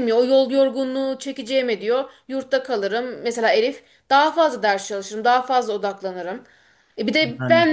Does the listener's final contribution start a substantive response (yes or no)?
no